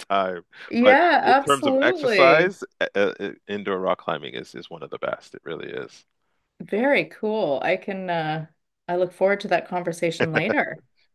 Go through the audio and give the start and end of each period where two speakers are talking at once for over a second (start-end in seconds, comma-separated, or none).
0.8-2.5